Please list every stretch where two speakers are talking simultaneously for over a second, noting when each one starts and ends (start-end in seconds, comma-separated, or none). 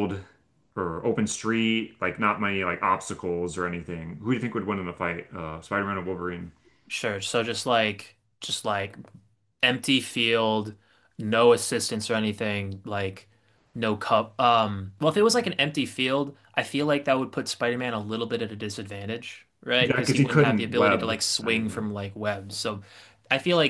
19.8-21.9